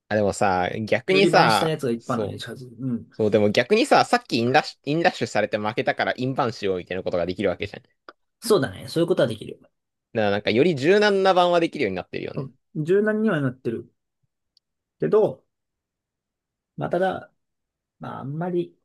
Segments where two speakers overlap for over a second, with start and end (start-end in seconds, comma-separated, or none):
1.1-2.4